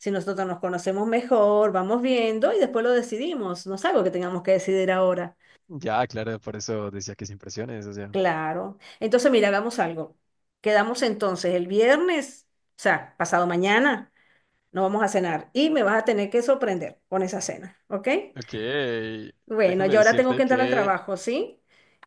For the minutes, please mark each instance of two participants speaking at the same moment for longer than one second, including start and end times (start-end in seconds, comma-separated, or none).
19.6-20.9